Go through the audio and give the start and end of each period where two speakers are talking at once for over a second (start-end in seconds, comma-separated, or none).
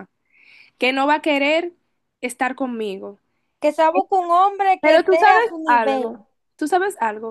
4.8-6.2